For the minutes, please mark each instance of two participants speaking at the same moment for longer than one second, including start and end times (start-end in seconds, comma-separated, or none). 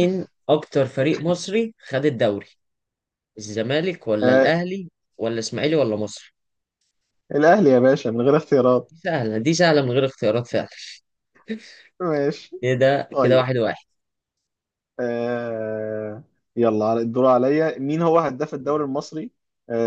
none